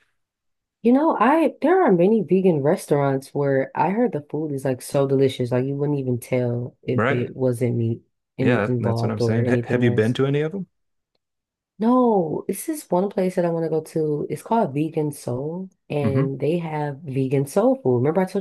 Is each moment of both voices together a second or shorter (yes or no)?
no